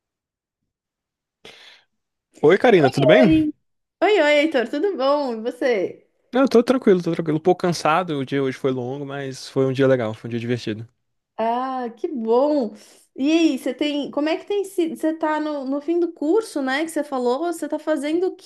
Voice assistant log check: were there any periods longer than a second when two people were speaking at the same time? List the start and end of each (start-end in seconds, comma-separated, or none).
none